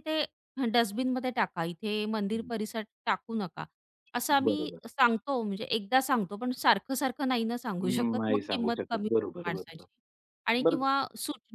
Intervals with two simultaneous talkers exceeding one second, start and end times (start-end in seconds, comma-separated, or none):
7.8-9.8